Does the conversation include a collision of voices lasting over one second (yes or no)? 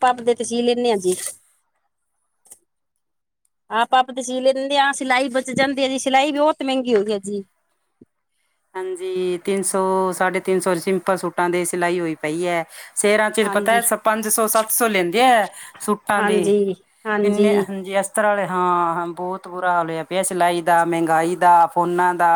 no